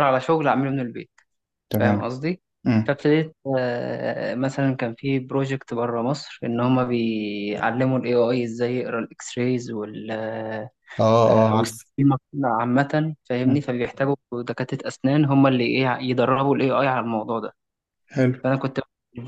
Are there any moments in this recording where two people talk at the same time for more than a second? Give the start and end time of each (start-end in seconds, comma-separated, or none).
none